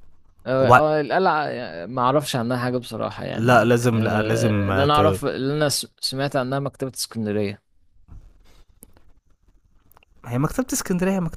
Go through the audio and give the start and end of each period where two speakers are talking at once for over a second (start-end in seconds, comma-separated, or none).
3.3-5.2